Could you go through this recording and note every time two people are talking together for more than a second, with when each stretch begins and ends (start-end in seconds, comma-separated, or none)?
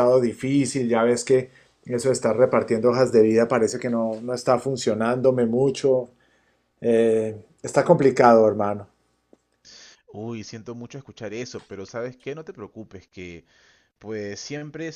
none